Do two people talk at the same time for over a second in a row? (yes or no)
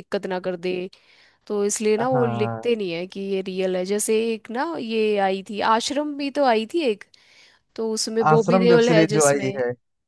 yes